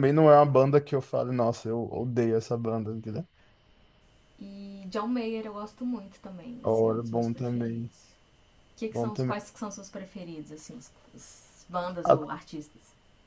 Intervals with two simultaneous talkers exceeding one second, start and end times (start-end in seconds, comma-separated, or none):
6.6-7.9